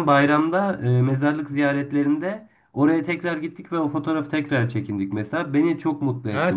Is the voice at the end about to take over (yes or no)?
yes